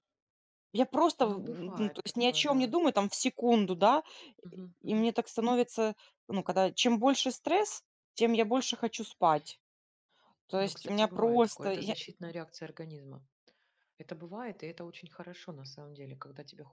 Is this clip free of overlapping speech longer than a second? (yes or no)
no